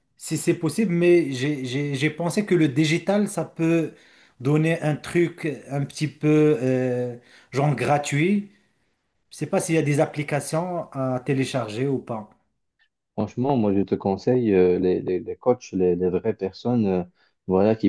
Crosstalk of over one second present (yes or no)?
no